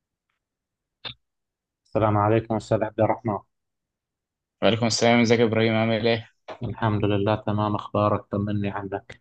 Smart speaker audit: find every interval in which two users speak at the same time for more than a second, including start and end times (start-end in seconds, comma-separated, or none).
none